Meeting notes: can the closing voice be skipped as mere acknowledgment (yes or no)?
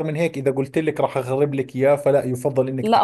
no